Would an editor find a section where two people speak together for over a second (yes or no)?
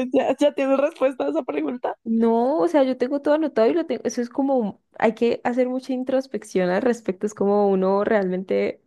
no